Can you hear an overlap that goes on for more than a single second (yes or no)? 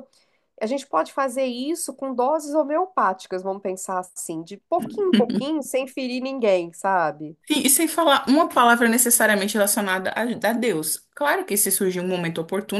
no